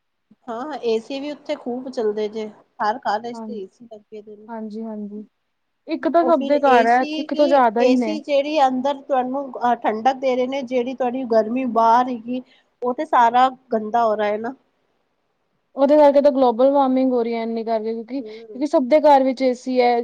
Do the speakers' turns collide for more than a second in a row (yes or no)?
yes